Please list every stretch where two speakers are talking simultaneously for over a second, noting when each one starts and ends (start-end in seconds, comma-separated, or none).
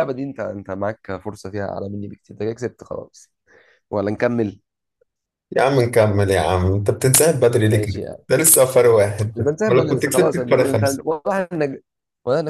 9.4-11.0